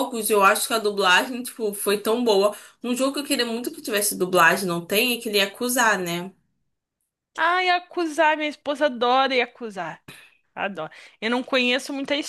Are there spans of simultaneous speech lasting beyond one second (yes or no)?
no